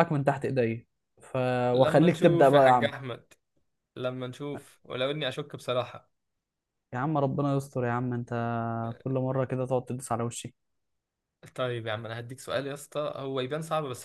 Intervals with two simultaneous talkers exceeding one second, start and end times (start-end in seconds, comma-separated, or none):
1.7-2.9